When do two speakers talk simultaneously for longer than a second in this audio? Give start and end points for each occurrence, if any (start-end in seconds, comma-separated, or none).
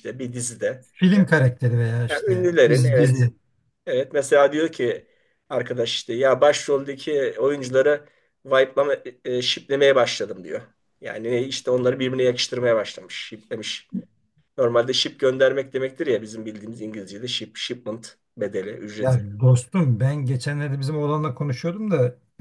2.1-3.3